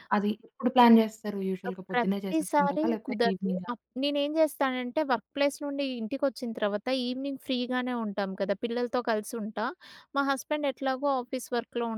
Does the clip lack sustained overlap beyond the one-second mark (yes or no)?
no